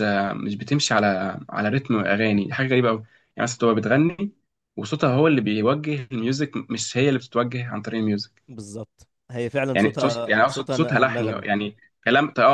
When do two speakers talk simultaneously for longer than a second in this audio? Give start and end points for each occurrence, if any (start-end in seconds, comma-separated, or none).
9.7-11.4